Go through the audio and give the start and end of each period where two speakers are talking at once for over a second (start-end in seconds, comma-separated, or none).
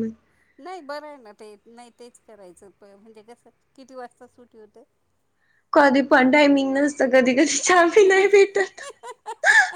none